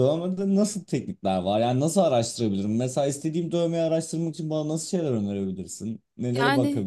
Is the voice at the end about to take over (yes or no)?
yes